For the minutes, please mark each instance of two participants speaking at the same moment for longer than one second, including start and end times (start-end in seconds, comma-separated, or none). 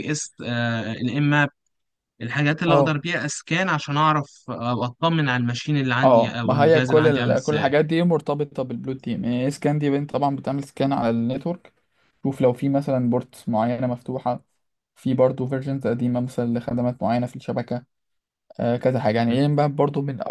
6.0-7.7